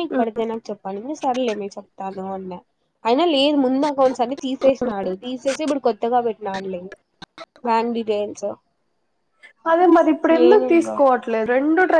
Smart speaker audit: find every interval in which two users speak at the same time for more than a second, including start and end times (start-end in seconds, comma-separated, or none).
none